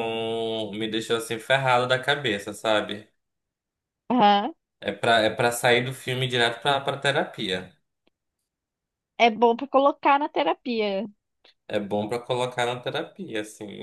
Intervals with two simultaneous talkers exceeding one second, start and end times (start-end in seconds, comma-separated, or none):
none